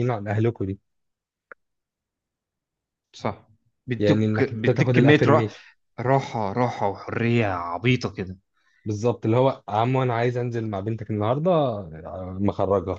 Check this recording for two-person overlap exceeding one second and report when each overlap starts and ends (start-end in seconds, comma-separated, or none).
4.0-5.5